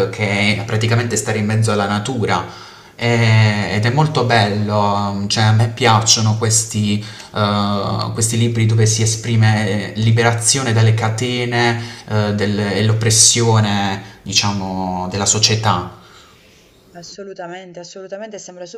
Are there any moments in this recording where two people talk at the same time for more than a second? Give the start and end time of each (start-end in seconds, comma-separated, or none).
none